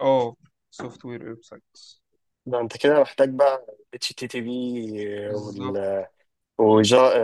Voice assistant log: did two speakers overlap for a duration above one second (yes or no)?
no